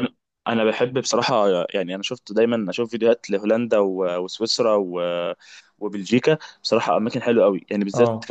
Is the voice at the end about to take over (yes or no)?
no